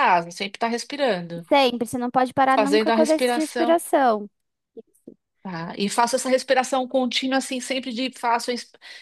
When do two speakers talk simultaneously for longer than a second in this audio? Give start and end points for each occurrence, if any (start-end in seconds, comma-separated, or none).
2.6-3.8